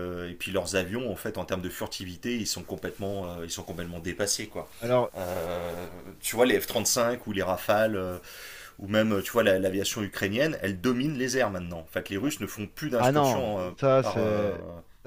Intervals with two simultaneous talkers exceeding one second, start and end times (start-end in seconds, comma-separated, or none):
13.0-14.6